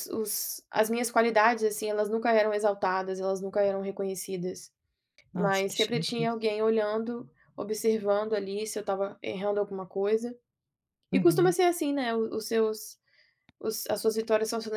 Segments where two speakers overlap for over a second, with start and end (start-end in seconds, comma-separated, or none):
5.3-6.5